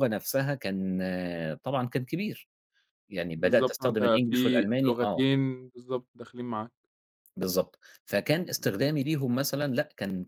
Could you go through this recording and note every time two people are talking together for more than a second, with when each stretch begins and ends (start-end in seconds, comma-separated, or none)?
3.4-5.2